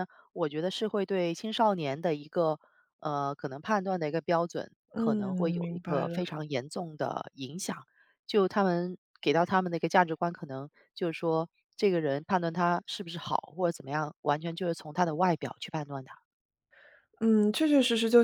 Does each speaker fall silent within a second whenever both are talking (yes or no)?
no